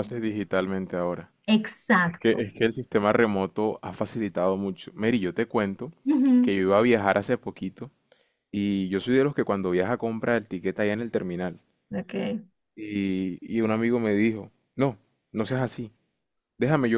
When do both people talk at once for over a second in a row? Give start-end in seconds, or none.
none